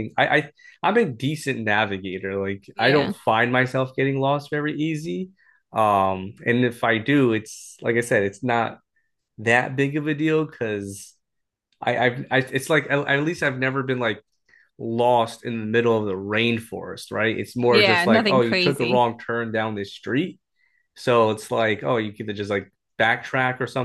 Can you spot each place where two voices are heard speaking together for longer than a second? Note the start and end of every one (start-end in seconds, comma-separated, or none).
17.7-19.1